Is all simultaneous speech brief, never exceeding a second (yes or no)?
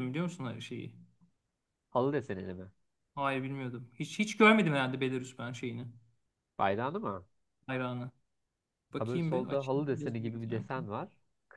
no